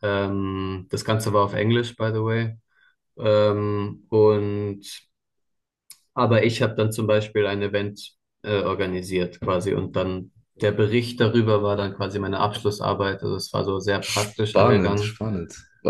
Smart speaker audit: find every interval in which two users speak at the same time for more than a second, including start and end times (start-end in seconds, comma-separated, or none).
14.0-15.2